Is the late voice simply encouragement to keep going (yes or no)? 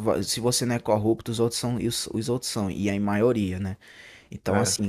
yes